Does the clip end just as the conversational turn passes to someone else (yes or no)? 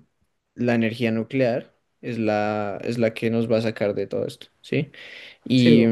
no